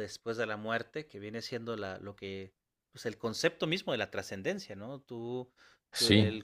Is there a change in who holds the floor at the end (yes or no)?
no